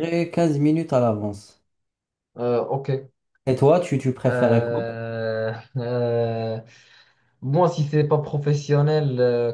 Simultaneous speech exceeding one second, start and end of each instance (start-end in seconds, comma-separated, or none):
none